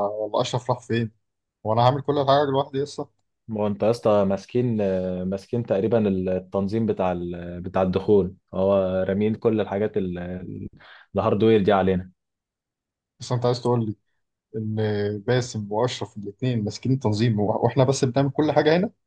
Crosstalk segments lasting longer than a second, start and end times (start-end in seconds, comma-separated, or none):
none